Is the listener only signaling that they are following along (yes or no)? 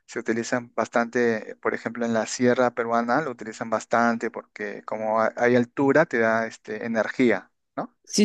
no